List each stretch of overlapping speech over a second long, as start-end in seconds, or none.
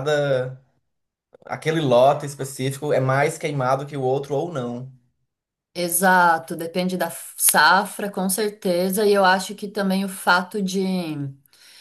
none